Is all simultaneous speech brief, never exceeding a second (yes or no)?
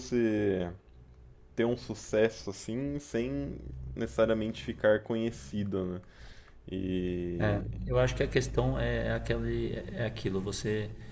yes